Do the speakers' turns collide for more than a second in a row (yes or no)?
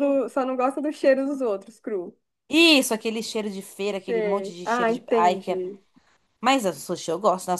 yes